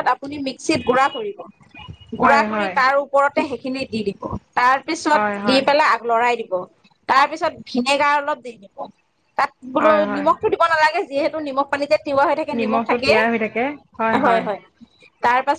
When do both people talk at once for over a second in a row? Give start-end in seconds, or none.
none